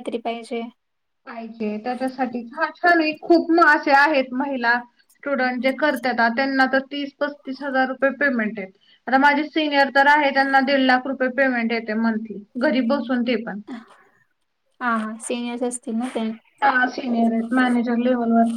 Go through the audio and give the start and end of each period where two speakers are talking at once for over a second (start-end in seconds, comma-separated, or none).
none